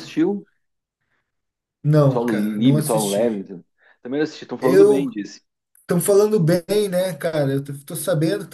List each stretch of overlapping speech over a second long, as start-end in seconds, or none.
2.1-3.5